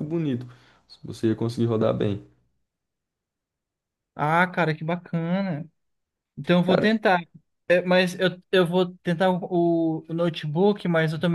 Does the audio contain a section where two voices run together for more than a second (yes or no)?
no